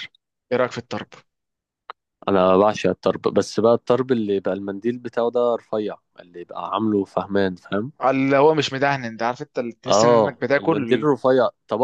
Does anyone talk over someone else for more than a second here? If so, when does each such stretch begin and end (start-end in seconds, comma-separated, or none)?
9.9-11.1